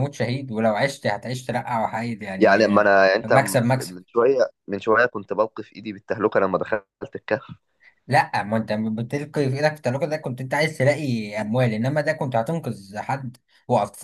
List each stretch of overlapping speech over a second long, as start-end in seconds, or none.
2.4-4.0